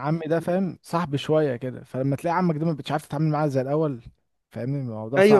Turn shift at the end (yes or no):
yes